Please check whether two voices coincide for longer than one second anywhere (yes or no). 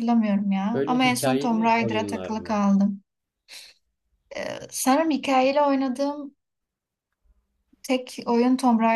yes